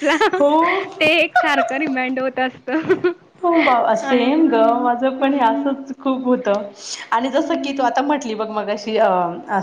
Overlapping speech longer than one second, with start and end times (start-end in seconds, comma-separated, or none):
4.0-5.8